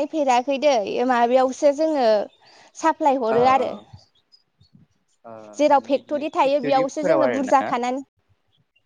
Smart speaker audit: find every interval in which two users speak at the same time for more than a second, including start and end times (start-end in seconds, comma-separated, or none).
5.6-7.5